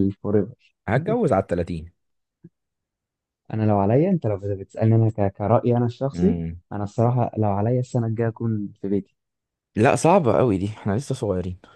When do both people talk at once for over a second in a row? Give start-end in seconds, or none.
none